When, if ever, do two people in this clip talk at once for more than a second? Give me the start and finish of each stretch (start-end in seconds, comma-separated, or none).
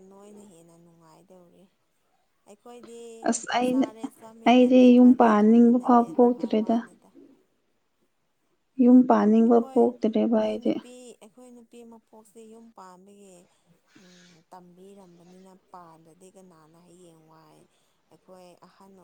4.5-6.8, 9.1-10.7